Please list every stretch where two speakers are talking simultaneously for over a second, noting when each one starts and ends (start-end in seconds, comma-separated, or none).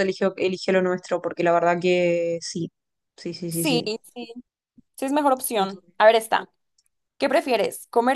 none